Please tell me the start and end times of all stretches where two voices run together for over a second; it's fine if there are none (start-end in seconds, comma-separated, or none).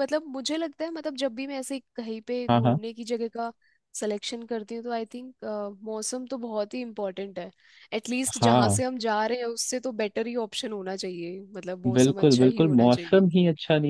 11.9-13.2